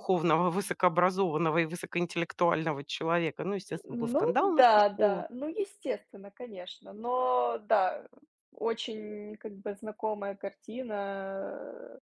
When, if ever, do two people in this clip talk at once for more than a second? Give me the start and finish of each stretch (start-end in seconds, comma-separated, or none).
3.8-5.2